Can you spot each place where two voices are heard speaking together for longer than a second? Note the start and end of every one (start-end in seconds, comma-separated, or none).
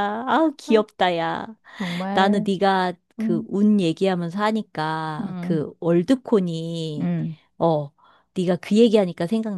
none